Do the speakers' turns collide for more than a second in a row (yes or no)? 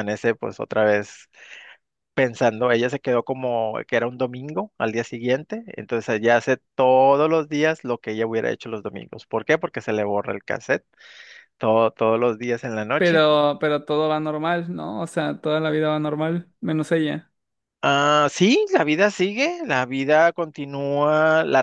no